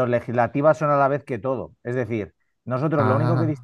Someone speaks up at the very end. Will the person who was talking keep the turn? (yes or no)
yes